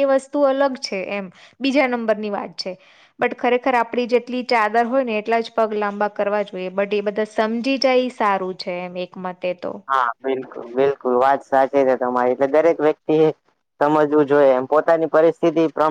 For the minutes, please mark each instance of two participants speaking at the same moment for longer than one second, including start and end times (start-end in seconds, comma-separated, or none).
none